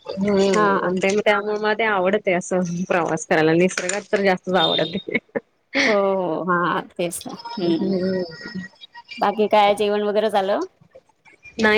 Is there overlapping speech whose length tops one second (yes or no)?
no